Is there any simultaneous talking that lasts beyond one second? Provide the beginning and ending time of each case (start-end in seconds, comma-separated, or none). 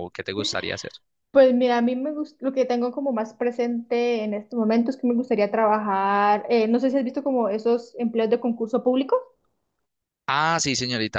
none